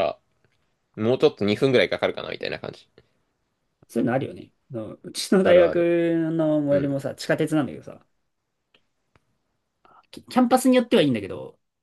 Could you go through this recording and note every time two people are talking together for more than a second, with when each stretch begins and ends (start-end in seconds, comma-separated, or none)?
none